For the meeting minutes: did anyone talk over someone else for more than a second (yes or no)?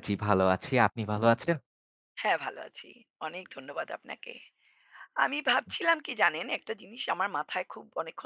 no